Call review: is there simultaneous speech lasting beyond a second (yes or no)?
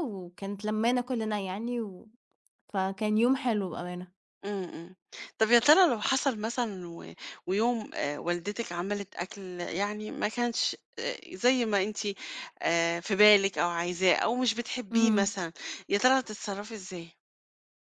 no